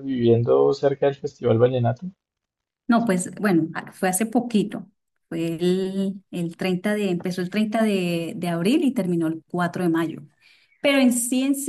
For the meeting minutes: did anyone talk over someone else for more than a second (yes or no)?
no